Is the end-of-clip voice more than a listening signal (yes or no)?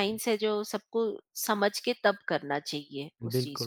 yes